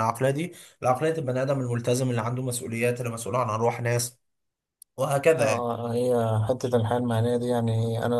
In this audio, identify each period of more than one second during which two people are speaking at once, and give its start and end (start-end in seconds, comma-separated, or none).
none